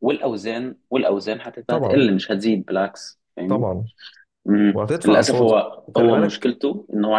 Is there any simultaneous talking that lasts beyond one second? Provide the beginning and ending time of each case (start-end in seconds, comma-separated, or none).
4.7-6.5